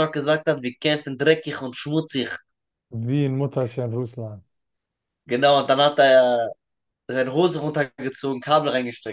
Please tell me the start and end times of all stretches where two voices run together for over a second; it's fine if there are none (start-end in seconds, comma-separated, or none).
none